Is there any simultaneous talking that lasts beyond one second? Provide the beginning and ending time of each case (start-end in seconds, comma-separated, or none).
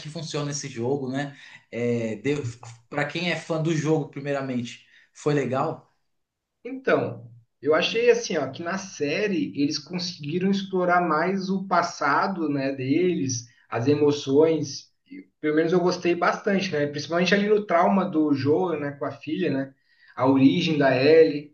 none